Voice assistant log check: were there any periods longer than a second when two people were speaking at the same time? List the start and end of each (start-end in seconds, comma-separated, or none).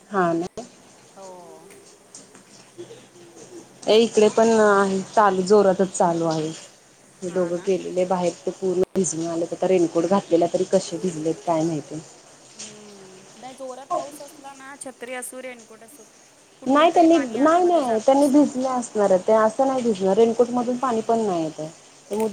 16.7-18.6